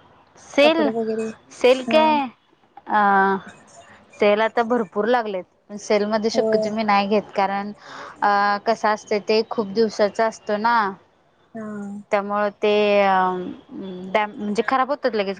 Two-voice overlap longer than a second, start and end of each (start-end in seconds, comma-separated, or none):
none